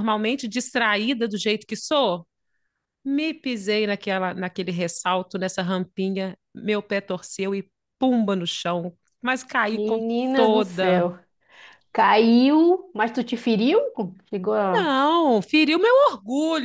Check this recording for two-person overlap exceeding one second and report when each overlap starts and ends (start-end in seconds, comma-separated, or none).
9.7-11.1